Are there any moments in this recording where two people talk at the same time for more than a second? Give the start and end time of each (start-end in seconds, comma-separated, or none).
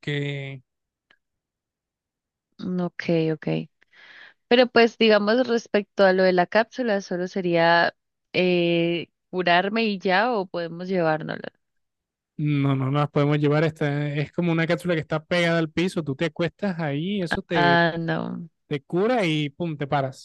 none